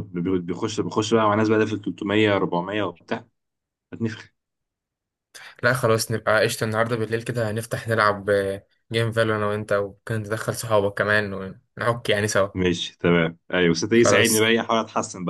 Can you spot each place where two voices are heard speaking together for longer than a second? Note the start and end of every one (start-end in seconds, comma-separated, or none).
none